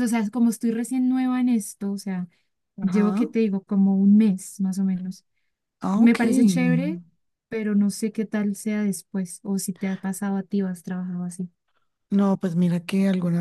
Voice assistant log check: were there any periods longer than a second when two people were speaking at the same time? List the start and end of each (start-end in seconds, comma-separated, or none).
none